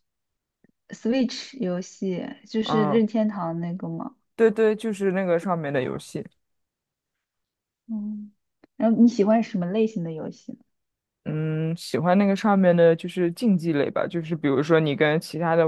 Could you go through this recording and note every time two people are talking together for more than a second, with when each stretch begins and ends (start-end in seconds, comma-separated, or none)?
none